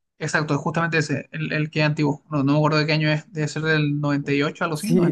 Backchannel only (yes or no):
no